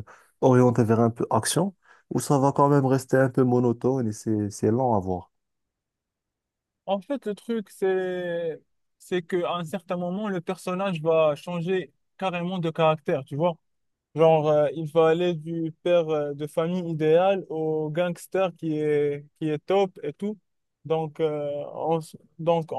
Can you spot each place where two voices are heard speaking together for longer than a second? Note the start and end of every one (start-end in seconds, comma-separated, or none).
none